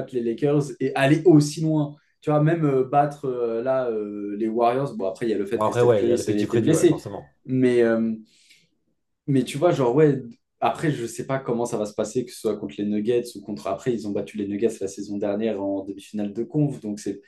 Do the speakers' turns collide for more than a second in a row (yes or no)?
yes